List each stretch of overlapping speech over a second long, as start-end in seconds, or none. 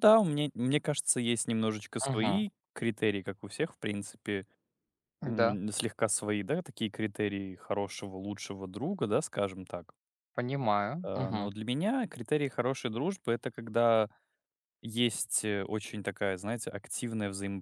none